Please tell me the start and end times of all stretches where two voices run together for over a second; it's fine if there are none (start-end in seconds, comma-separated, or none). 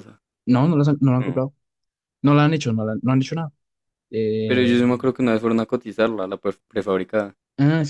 none